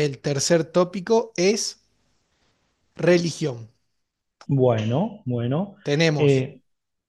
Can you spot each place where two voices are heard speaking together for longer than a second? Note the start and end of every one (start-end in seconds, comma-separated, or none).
none